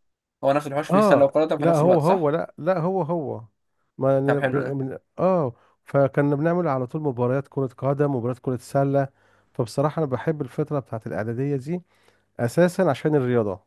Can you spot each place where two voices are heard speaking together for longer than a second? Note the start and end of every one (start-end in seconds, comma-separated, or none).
0.9-2.3